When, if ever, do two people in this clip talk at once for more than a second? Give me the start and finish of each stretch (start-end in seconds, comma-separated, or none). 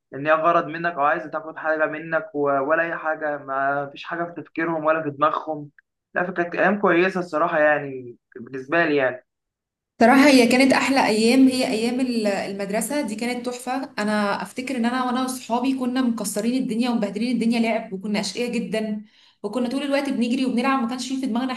none